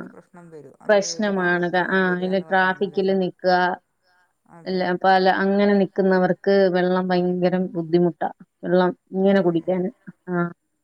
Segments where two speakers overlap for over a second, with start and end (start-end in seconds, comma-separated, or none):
0.9-3.2